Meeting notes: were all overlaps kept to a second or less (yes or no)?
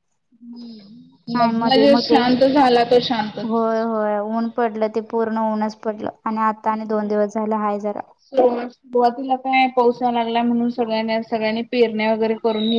yes